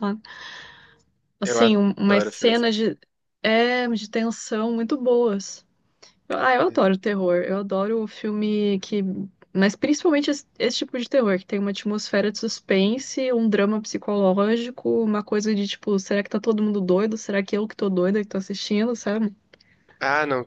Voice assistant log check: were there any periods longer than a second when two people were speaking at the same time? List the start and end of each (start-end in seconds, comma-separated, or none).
1.4-2.7